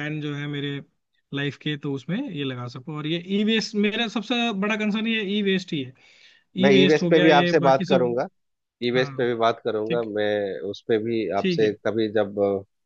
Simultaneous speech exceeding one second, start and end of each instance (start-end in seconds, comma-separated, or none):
6.7-8.2